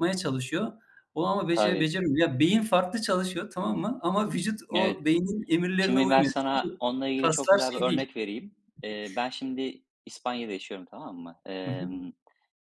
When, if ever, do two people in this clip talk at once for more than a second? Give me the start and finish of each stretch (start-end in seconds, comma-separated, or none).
5.8-8.1